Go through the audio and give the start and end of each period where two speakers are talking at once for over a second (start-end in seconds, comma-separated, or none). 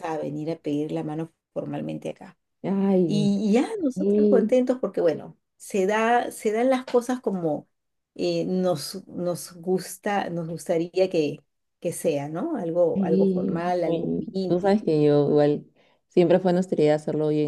12.9-14.8